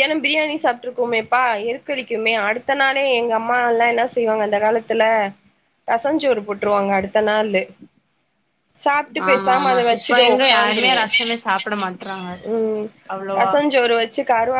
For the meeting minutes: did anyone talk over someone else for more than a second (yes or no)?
yes